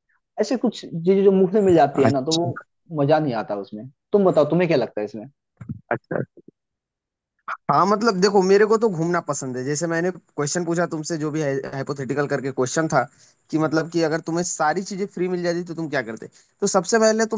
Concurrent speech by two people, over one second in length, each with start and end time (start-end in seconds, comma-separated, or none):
none